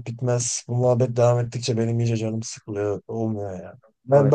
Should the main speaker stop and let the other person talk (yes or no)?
no